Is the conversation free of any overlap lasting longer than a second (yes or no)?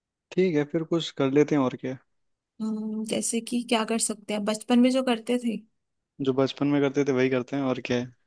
yes